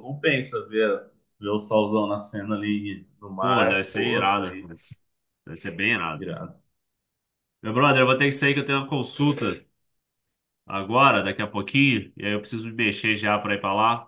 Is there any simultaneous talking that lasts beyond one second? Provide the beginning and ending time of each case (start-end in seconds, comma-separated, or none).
3.4-4.7